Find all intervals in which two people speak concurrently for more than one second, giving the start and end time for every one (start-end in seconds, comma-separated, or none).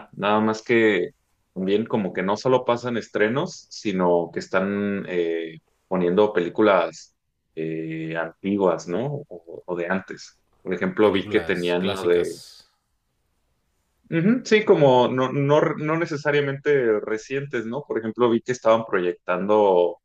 11.0-12.4